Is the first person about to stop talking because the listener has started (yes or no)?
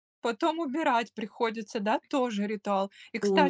no